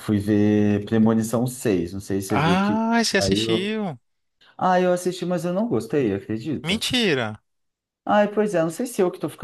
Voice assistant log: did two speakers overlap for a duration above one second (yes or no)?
yes